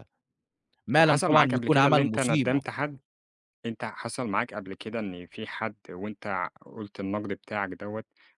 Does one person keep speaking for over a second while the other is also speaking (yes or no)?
yes